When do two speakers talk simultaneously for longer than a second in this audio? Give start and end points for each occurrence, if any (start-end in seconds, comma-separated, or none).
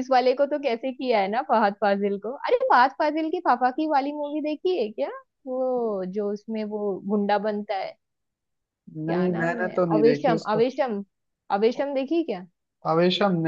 9.1-10.6